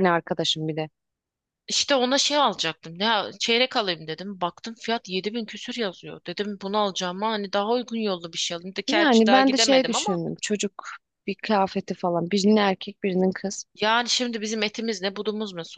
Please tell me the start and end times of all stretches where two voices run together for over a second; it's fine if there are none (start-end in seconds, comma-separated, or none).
8.9-10.2